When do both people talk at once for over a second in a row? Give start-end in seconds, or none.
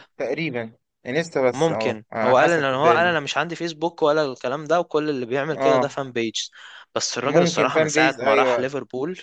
1.5-3.2, 7.2-8.7